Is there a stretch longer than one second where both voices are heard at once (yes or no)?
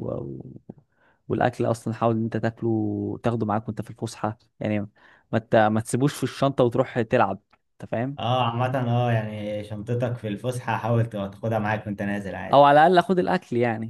no